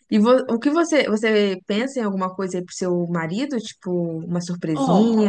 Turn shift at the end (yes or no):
yes